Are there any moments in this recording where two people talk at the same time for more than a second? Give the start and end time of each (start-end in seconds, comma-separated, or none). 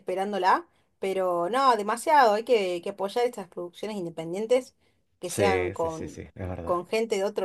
5.2-6.8